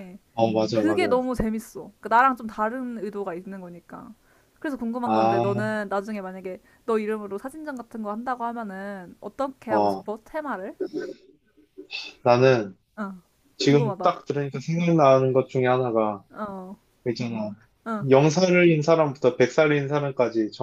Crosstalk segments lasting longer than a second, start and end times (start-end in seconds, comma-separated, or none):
none